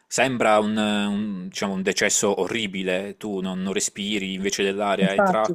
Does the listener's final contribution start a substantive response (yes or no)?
no